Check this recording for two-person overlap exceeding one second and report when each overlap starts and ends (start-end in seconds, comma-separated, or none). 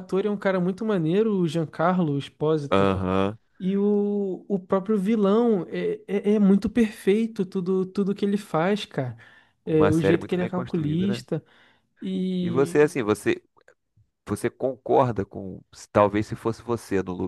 9.7-11.2